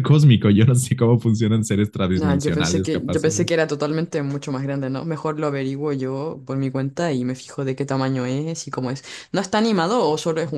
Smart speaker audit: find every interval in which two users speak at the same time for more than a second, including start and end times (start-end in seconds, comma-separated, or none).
2.1-3.5